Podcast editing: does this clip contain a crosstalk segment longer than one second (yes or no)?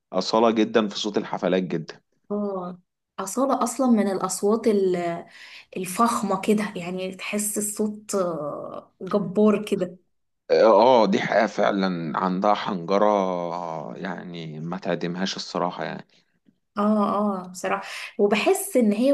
no